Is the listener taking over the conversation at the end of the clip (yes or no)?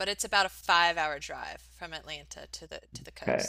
yes